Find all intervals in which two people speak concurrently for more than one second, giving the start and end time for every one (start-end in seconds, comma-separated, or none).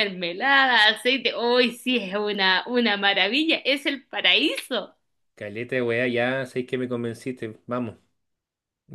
none